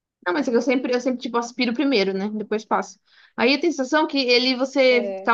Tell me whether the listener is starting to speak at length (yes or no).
no